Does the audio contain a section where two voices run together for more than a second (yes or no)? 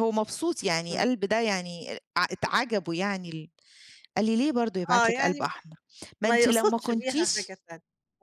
yes